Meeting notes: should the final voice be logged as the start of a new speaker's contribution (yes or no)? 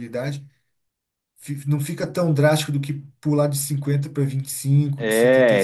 yes